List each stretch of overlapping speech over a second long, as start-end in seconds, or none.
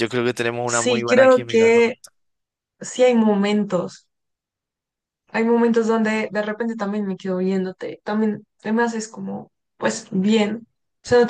0.7-1.9